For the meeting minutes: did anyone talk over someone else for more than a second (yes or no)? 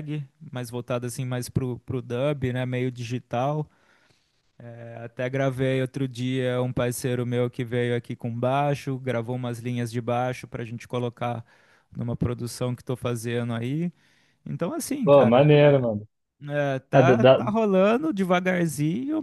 no